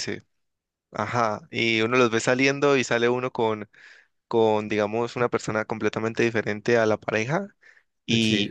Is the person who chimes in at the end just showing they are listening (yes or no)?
yes